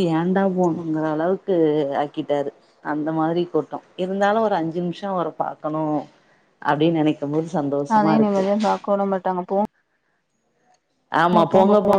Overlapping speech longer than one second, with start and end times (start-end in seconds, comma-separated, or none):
none